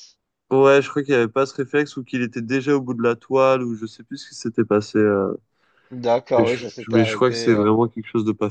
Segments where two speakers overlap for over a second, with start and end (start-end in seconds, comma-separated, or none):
6.4-7.7